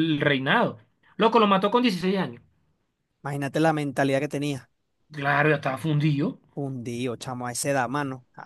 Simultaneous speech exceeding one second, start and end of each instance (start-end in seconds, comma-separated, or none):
none